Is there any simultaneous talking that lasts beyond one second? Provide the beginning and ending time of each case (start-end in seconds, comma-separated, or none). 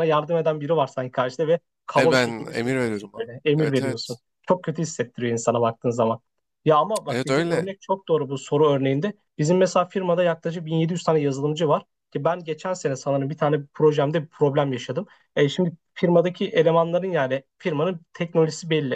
2.0-4.2